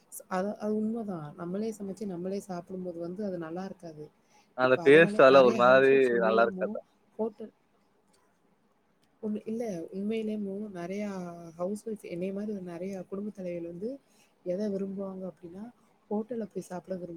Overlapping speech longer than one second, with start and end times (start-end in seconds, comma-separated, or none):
4.7-6.7